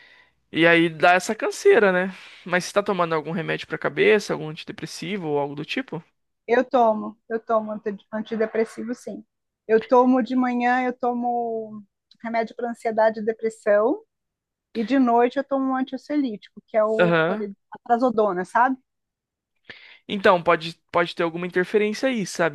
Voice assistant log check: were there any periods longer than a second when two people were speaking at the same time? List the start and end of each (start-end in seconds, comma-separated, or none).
none